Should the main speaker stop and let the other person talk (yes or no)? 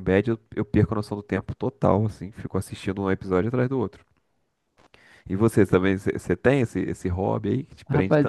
yes